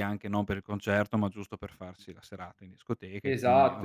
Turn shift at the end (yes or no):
yes